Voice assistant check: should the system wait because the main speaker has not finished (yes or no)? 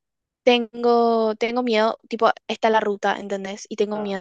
yes